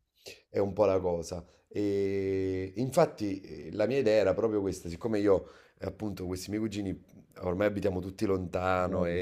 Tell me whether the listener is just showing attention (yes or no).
yes